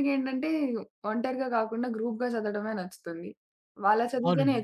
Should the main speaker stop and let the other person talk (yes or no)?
no